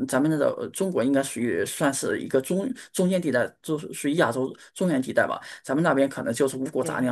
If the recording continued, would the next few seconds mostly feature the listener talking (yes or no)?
no